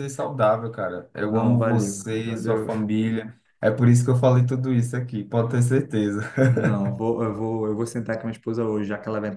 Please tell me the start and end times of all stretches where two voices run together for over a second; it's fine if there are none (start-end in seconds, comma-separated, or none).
1.2-2.7